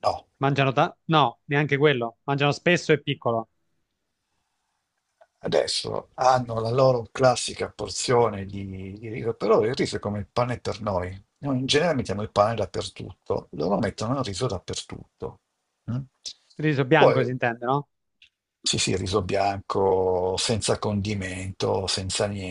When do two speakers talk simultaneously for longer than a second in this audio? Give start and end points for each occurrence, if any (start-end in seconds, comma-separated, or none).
none